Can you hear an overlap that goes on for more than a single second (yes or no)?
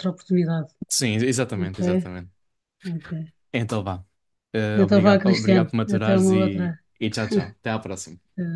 yes